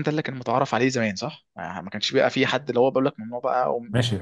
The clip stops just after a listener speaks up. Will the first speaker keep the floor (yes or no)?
no